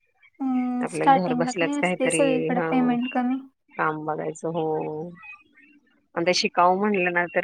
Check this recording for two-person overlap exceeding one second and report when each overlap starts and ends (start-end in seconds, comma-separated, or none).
0.8-3.0